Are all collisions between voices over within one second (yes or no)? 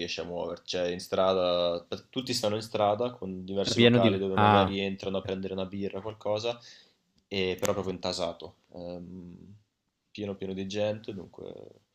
no